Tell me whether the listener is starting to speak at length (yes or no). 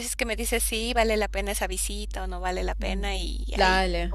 yes